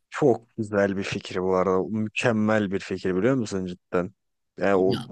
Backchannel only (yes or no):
yes